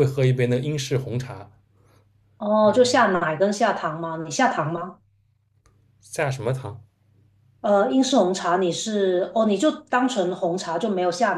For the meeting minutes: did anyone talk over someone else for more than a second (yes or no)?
no